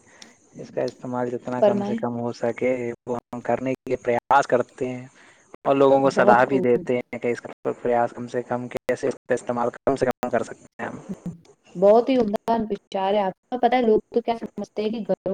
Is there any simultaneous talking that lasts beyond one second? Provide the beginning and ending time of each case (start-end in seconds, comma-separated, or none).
none